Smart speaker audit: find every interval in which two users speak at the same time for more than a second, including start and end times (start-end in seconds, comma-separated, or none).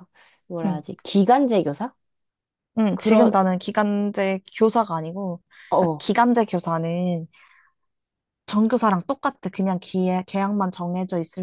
none